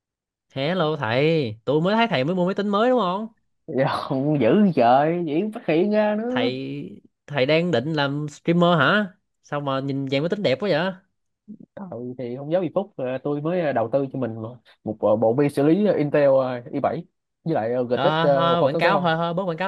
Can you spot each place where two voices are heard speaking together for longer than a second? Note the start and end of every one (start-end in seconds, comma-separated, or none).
17.9-19.1